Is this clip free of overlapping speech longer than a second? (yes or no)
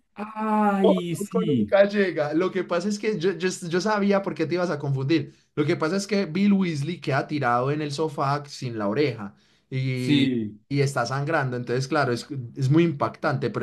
yes